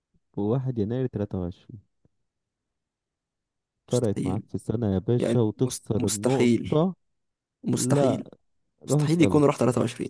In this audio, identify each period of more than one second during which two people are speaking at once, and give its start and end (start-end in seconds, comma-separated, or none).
5.2-6.8